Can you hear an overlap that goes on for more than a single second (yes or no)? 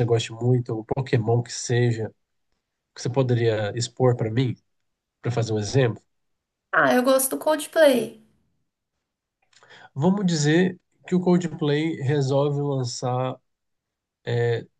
no